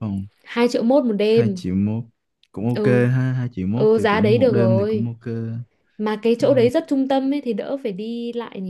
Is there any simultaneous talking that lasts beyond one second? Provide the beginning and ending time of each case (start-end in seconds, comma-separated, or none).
3.7-5.1